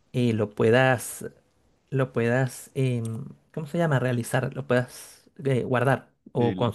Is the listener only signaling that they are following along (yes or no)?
no